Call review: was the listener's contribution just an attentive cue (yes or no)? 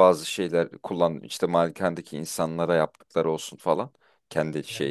no